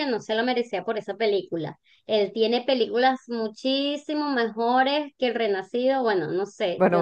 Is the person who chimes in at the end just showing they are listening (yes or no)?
no